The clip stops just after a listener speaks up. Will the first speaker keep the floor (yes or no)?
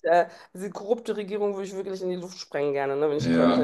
no